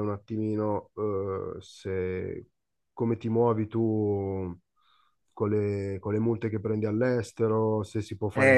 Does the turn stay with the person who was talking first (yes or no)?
no